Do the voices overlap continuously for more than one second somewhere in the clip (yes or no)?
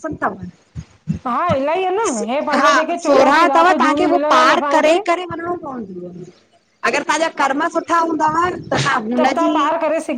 yes